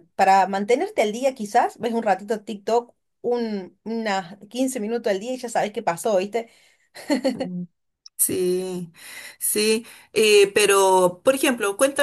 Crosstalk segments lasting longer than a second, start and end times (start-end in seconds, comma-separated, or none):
none